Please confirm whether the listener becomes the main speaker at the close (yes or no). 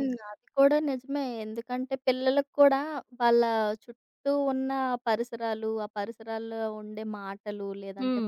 no